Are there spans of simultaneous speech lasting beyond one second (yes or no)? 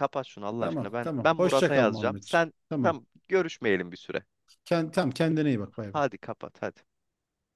yes